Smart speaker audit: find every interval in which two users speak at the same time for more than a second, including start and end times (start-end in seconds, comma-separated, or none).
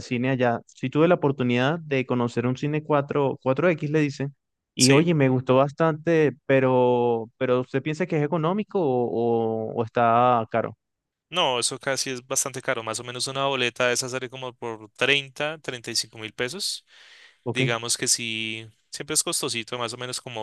none